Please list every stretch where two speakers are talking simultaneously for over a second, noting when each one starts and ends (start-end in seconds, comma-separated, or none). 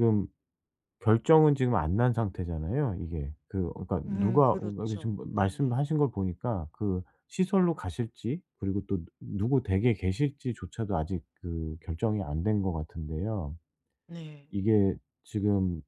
4.1-5.8